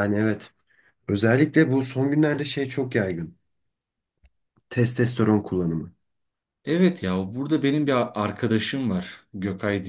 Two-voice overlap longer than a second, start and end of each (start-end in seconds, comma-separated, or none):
none